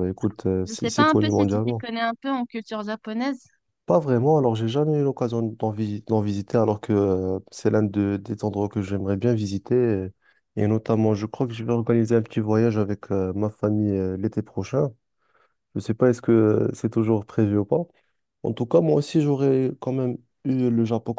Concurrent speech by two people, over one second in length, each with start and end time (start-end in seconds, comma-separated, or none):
0.6-1.8